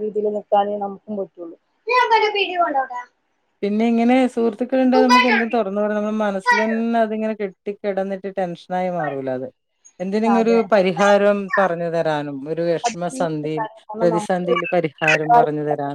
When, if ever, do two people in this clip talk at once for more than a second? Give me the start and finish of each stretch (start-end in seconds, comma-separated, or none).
12.8-14.4